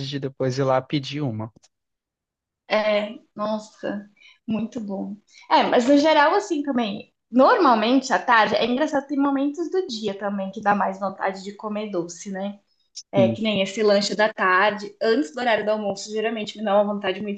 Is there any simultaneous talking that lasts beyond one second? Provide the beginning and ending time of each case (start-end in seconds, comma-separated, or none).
none